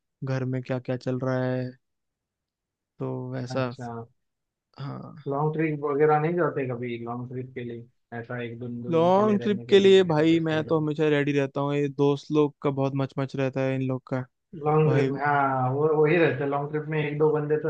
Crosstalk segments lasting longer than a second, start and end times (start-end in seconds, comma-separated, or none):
8.9-10.3